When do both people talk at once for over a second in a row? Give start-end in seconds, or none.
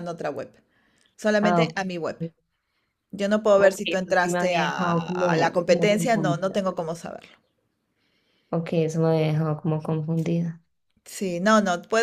3.6-6.6